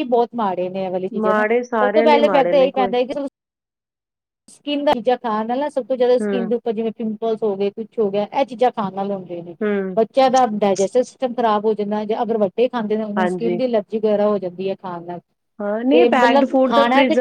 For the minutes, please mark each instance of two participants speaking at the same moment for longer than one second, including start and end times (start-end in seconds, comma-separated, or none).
1.2-2.9